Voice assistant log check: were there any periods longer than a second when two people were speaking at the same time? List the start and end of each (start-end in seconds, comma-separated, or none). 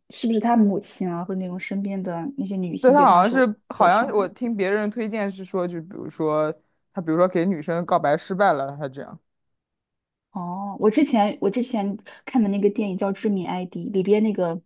2.8-4.3